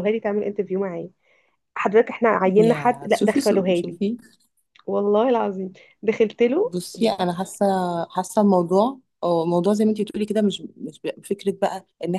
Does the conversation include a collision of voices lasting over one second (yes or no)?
yes